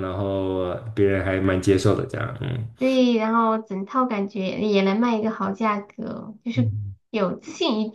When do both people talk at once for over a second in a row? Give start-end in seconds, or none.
none